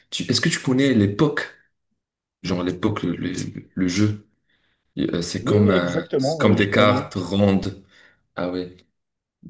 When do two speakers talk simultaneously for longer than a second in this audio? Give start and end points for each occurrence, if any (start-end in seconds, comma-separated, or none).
5.4-7.1